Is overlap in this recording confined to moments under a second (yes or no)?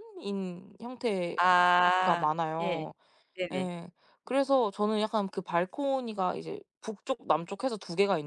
no